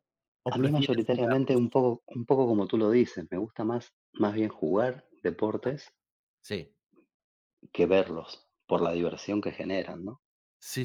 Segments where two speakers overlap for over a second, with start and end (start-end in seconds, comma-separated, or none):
0.5-1.8